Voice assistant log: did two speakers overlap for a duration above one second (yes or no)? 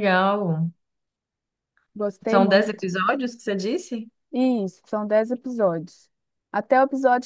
no